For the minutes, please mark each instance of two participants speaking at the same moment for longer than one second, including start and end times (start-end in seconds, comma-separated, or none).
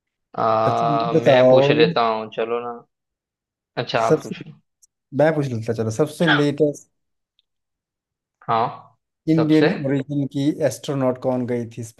0.7-1.9